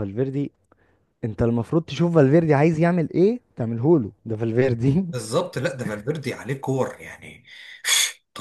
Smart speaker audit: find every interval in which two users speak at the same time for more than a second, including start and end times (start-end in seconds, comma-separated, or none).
none